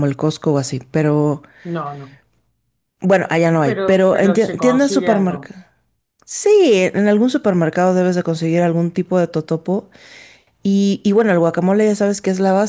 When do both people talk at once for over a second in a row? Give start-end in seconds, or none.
3.6-5.5